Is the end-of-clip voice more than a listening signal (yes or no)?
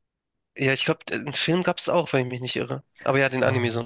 yes